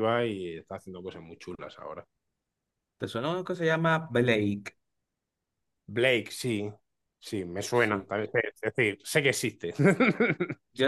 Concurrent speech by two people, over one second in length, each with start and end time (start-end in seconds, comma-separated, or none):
none